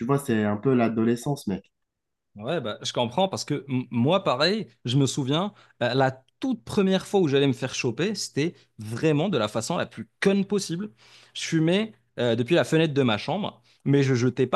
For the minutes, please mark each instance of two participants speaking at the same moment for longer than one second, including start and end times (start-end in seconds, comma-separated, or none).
none